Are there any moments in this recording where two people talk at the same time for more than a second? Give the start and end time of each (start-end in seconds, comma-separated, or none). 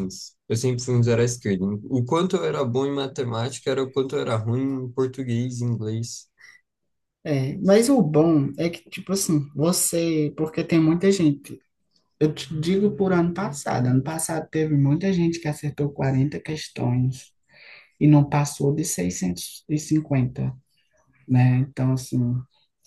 none